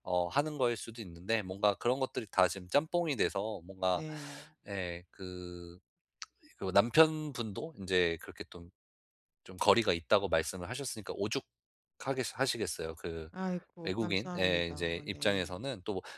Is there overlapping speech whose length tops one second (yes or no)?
yes